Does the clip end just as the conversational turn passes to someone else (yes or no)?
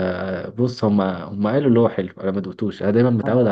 yes